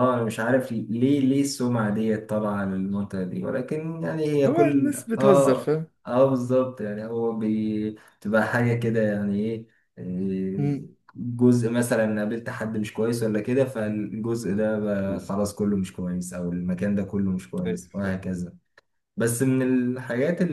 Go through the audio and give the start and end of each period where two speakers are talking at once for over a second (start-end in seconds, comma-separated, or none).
4.5-5.9